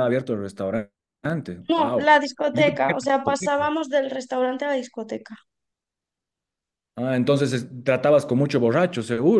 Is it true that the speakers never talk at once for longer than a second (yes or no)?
no